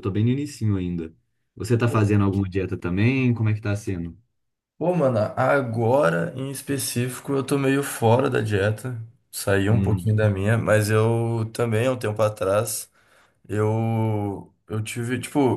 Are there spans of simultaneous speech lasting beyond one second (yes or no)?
no